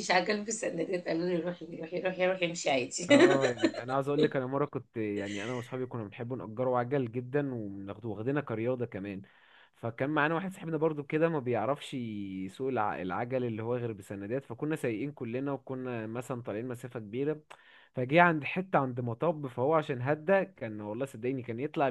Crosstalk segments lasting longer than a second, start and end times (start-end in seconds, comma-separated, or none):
none